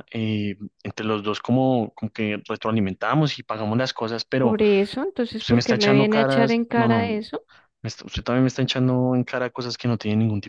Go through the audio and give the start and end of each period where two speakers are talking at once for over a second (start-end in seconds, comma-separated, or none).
5.4-7.1